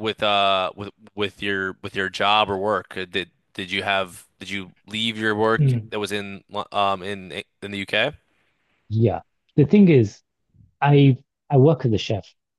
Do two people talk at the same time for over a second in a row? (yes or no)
no